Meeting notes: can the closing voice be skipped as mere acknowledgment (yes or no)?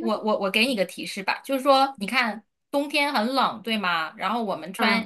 yes